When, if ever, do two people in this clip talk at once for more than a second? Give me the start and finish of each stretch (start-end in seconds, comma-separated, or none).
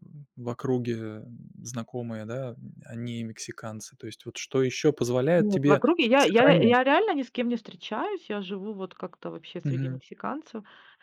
5.3-6.8